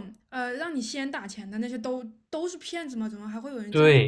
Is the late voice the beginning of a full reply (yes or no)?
yes